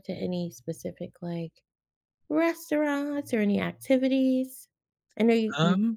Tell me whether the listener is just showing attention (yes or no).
yes